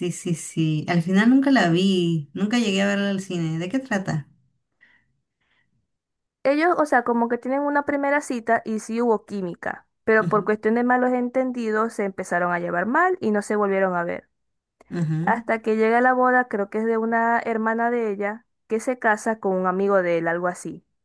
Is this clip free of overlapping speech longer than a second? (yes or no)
yes